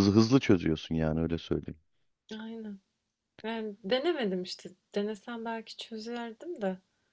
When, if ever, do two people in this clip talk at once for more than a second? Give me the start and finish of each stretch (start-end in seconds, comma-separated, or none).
none